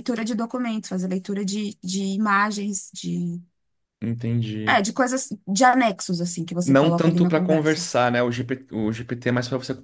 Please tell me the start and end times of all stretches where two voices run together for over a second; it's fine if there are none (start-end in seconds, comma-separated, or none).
6.6-7.8